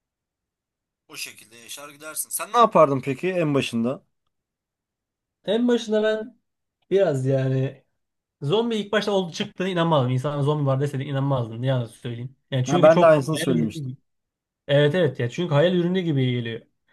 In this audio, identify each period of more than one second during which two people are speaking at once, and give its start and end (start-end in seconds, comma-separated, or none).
12.7-13.9